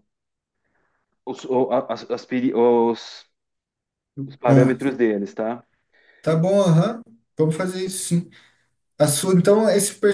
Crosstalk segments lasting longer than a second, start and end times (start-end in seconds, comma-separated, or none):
none